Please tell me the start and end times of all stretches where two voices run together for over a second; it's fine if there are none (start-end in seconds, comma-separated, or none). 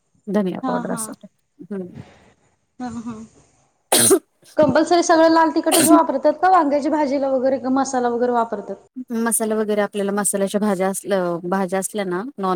none